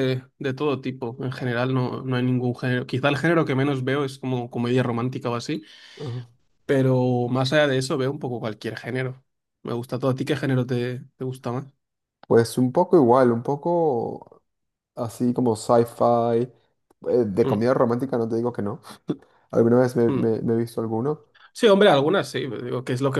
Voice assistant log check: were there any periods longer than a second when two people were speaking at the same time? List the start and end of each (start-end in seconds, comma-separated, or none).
none